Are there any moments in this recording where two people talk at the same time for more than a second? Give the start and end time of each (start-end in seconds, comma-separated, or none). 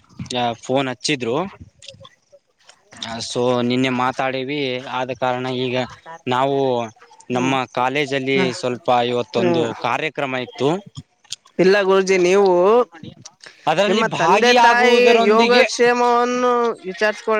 13.9-15.6